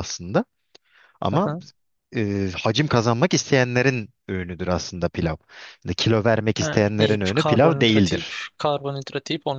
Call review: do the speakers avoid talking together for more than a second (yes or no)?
no